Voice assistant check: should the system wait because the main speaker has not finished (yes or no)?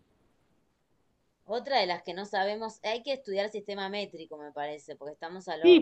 no